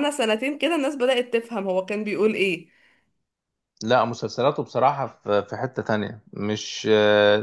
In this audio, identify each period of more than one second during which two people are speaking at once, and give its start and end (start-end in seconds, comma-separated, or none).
none